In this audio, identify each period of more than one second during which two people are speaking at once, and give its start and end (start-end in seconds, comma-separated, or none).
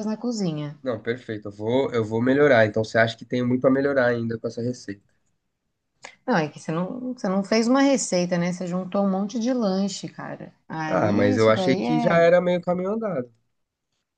10.9-12.3